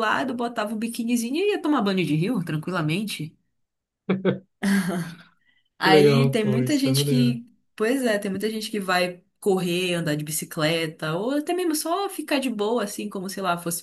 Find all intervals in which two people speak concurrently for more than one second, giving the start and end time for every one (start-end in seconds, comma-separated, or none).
5.8-7.4